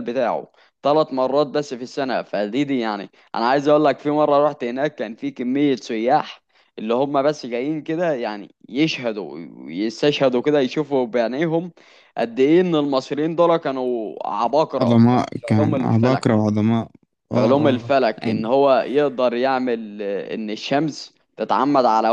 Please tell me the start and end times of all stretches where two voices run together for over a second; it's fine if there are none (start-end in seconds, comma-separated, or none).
14.8-16.3